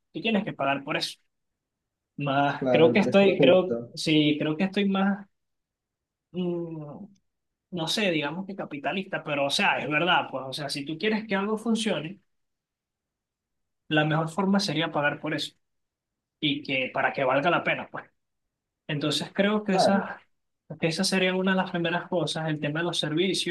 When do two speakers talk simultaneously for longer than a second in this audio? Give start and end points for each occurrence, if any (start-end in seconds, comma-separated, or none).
2.6-4.0